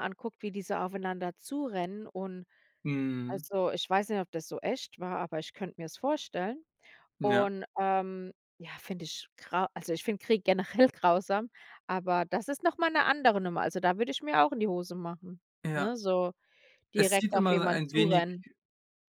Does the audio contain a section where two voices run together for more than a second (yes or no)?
yes